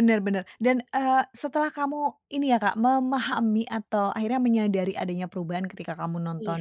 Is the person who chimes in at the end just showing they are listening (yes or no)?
yes